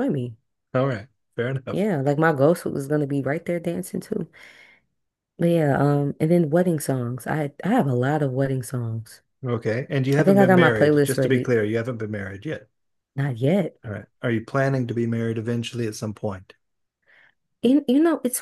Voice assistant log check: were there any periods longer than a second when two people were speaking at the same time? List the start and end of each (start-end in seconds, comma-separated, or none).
10.2-11.5